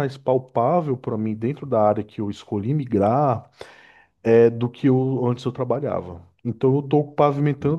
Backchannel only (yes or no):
yes